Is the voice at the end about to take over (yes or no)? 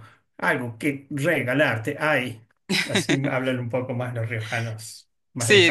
yes